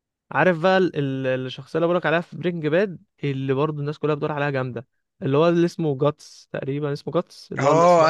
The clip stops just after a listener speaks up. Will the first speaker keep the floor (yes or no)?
no